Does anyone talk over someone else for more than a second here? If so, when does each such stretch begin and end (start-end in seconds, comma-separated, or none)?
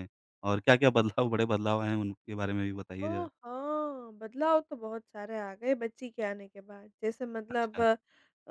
none